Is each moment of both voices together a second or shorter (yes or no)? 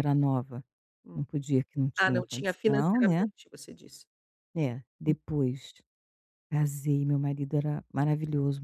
no